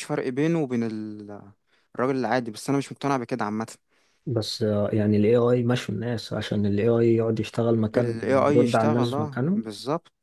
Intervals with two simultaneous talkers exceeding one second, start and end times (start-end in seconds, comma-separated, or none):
8.0-9.6